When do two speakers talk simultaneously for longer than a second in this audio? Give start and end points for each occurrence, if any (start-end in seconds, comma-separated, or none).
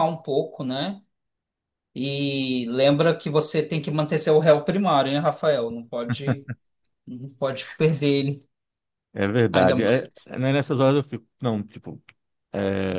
none